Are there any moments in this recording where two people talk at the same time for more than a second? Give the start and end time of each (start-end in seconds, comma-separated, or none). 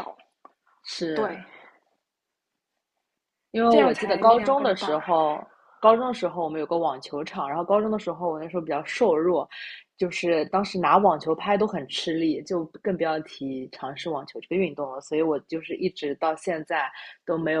3.7-5.1